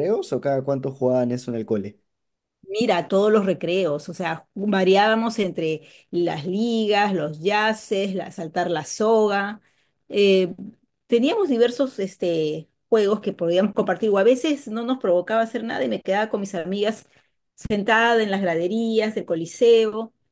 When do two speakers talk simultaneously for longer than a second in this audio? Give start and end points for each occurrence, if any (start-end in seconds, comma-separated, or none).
none